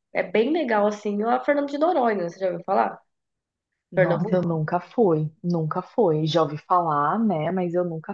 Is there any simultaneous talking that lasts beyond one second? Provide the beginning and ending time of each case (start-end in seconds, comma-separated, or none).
none